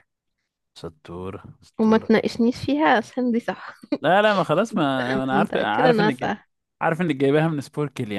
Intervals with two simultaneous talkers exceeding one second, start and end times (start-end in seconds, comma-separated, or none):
5.1-6.3